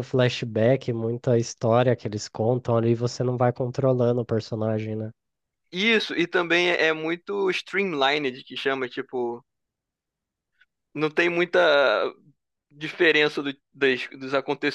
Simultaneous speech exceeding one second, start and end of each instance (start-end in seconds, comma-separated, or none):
none